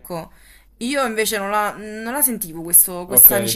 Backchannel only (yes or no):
no